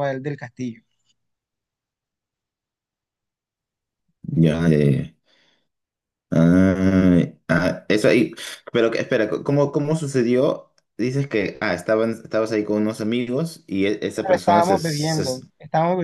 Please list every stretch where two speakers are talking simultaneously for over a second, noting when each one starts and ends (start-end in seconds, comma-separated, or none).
14.2-15.4